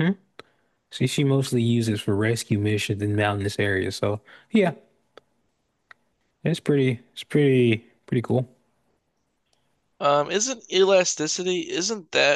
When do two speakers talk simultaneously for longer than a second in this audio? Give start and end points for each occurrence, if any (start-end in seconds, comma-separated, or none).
none